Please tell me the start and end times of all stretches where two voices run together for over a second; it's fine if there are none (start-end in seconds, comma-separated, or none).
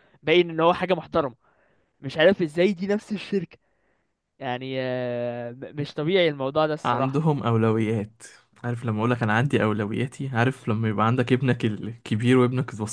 none